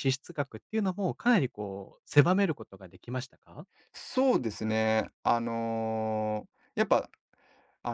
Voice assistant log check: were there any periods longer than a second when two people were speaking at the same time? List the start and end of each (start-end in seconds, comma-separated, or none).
none